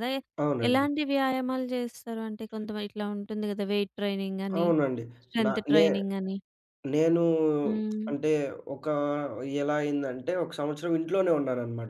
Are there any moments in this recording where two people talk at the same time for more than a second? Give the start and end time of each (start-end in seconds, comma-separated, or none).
none